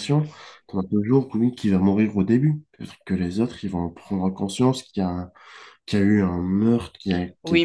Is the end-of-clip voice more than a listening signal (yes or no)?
yes